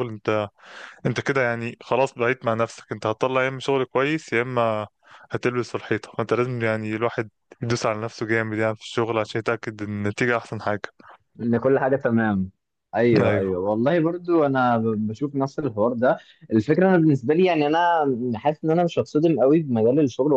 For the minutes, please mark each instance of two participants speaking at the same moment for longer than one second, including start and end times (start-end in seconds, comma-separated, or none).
none